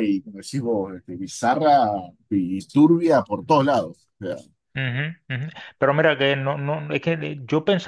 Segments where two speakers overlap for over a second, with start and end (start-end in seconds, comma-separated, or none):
none